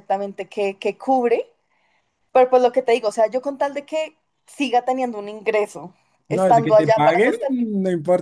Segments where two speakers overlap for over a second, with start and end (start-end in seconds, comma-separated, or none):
6.3-7.7